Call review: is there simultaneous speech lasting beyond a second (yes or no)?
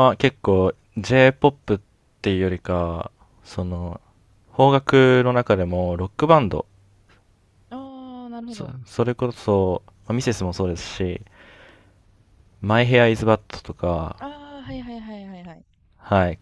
no